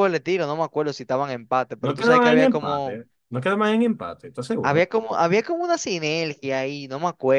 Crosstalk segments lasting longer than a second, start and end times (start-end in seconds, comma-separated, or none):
1.8-3.0